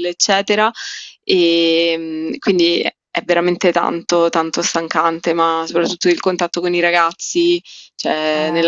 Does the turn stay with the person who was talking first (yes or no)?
no